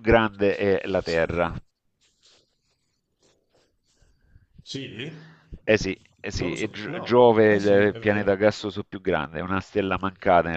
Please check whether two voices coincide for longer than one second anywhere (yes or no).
yes